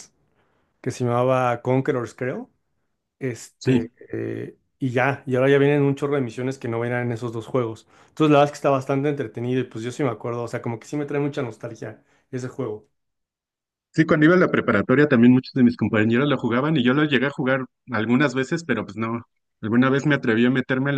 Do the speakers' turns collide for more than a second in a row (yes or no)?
no